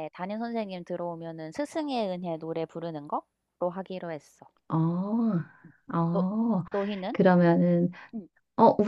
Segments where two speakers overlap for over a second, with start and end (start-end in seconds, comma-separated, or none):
none